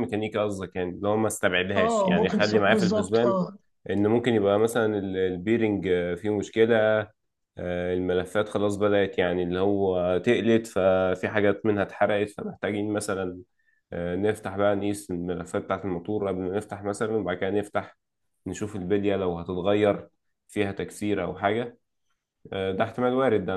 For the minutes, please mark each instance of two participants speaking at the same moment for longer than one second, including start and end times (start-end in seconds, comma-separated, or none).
1.8-3.4